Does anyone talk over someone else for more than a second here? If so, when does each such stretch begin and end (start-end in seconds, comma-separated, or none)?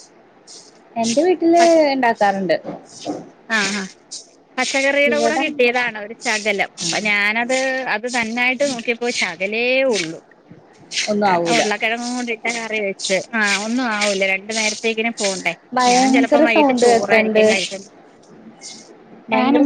15.9-17.4